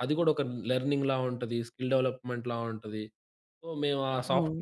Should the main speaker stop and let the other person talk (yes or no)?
no